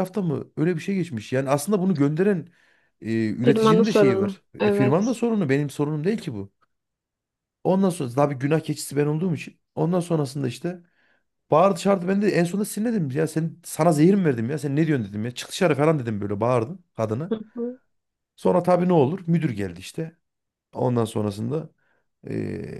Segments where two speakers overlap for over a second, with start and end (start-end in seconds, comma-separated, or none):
3.5-5.0